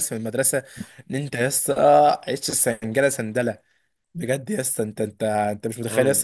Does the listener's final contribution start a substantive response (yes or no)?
no